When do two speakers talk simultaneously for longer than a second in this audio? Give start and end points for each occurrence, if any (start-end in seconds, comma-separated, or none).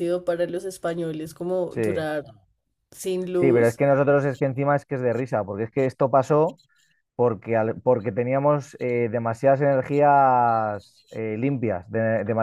none